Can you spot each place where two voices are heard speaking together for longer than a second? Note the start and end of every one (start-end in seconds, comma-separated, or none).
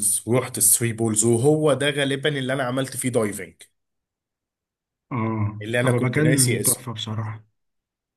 5.6-6.9